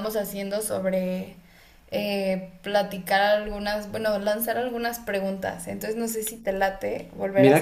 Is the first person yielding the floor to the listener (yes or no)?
yes